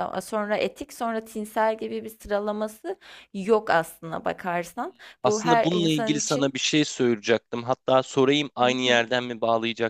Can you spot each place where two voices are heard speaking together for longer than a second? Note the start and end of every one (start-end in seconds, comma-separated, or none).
5.2-6.5